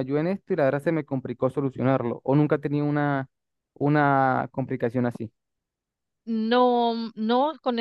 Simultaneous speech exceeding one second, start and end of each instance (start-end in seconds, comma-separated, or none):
none